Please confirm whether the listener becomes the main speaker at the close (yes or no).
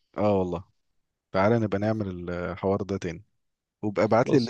no